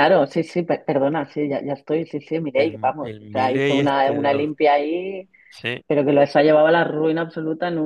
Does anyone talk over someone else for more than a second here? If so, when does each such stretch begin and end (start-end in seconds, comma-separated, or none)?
2.6-4.5